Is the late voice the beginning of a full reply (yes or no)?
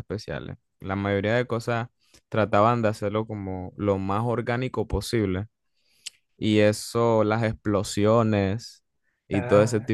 no